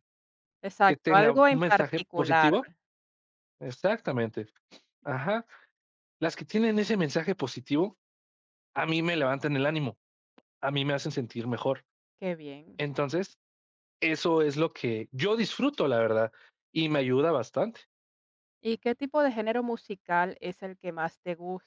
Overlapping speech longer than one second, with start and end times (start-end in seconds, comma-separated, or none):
0.9-2.5